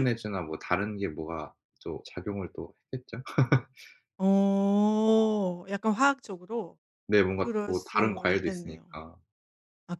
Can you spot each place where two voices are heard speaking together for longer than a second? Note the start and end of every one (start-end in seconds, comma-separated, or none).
7.4-9.0